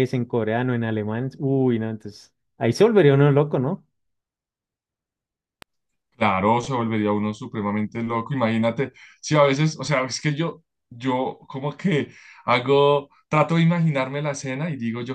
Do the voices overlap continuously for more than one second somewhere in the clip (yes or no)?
no